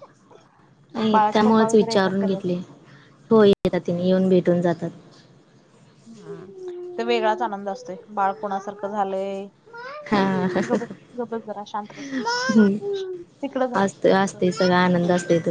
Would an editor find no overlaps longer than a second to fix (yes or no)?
no